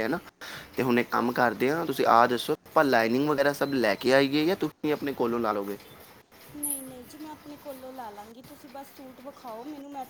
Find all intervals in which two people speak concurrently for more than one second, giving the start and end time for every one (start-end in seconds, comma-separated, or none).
none